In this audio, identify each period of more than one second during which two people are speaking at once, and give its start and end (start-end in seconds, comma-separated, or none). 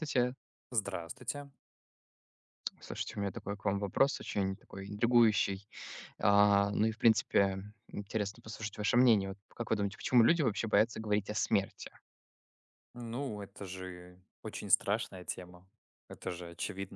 none